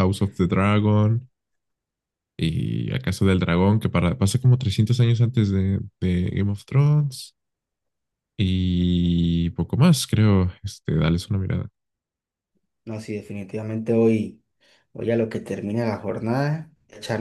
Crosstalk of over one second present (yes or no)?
no